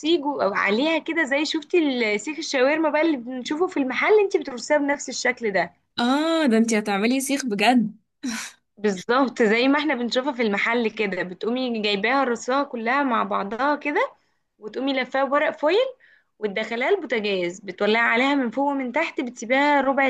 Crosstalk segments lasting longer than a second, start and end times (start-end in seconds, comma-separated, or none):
none